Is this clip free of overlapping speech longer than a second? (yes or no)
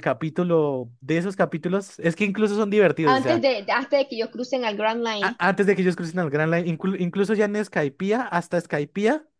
yes